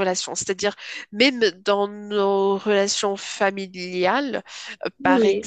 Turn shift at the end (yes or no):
no